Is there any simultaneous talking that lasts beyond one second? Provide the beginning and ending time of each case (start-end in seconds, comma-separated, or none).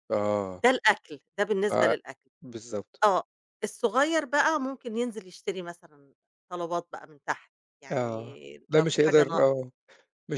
7.9-9.5